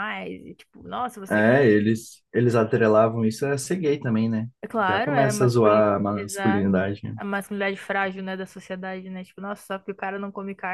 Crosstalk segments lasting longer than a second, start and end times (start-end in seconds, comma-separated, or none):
4.9-6.7